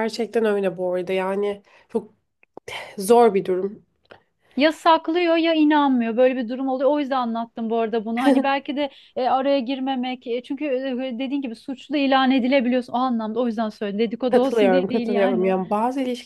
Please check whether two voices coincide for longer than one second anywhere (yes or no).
yes